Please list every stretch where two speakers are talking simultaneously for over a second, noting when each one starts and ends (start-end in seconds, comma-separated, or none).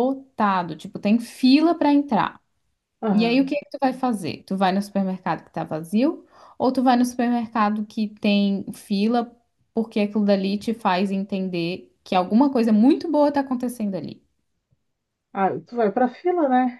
none